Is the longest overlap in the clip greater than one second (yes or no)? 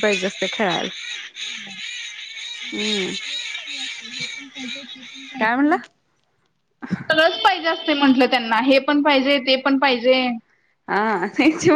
no